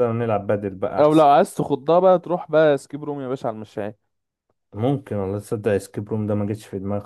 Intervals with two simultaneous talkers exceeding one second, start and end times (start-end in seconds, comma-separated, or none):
none